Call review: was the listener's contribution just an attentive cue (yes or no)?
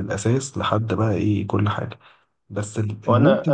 no